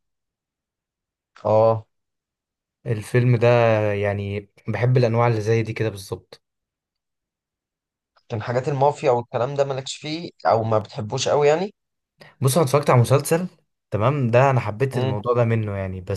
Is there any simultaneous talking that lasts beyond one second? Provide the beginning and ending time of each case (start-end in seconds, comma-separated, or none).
none